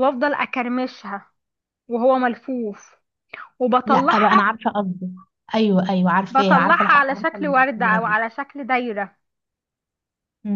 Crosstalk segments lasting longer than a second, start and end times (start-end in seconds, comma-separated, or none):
6.3-8.2